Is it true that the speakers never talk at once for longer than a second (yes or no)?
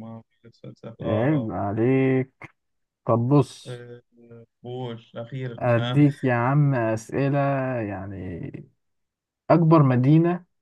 yes